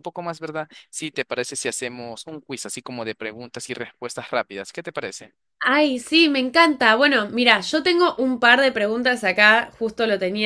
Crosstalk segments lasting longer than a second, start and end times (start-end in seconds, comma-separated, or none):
none